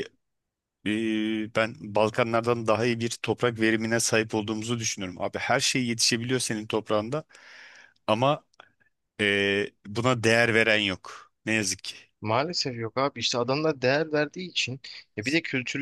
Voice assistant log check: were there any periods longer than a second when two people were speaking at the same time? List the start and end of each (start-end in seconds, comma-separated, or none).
none